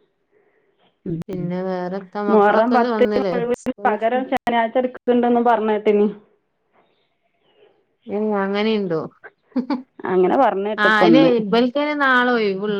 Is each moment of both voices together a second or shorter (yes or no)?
no